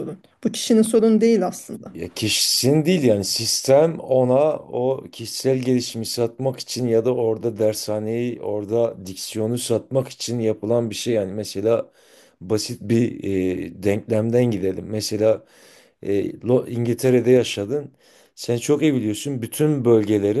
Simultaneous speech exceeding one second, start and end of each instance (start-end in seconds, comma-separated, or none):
none